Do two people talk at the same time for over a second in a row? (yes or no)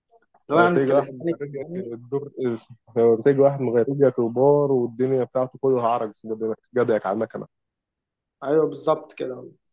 yes